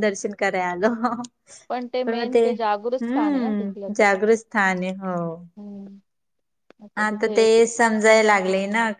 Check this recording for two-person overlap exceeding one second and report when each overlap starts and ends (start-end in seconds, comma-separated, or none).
2.1-3.5